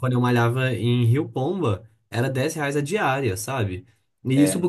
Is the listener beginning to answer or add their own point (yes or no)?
no